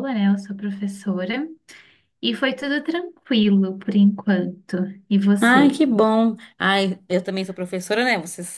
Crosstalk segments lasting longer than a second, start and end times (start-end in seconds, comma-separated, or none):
none